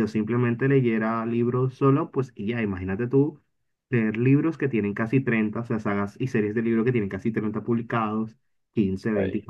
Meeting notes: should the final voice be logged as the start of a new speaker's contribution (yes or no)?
no